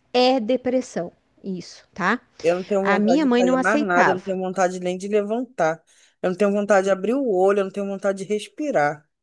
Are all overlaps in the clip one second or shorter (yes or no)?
no